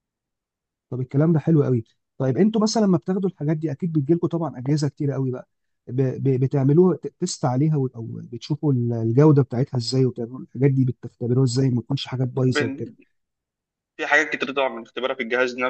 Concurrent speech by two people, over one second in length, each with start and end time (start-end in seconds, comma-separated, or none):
none